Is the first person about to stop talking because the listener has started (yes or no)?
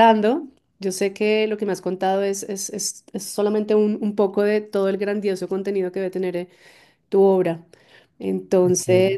no